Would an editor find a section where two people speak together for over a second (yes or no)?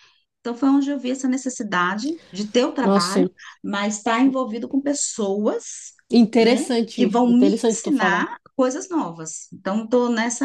yes